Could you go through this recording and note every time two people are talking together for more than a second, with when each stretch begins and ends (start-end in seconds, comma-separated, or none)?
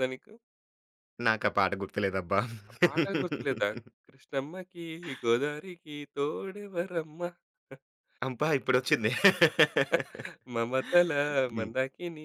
none